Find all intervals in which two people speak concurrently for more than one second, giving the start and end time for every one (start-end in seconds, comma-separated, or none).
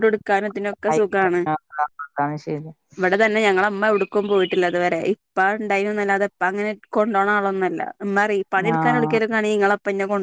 none